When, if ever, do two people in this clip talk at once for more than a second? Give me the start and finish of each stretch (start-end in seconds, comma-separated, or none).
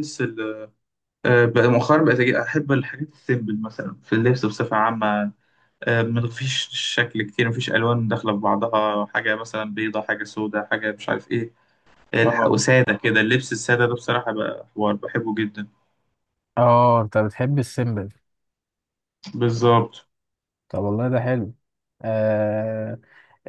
none